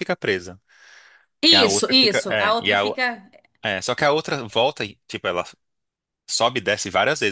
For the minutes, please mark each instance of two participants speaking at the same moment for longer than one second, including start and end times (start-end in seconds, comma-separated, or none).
1.5-3.0